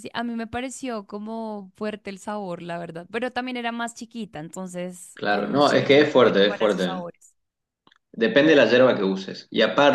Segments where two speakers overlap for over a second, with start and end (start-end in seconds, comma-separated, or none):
5.1-7.0